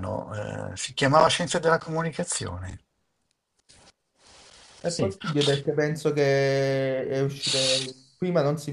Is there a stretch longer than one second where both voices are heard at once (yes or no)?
no